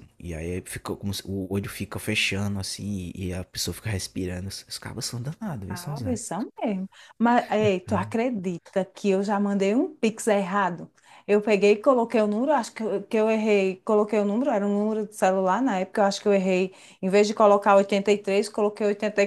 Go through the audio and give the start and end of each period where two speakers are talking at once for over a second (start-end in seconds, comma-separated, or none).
none